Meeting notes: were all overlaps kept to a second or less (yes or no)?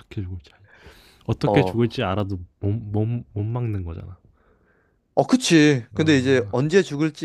yes